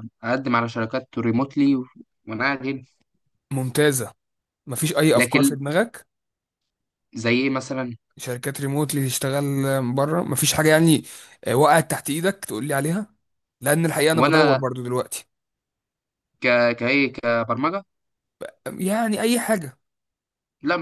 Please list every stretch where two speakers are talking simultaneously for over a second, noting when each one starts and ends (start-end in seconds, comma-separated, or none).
none